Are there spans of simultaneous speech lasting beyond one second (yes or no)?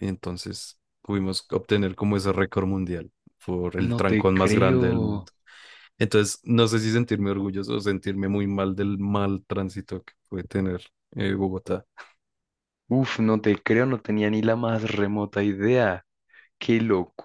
yes